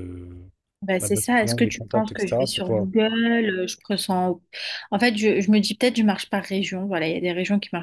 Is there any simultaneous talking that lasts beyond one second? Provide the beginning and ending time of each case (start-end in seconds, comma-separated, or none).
1.0-2.9